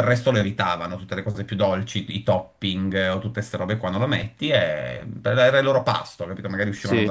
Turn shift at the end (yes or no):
no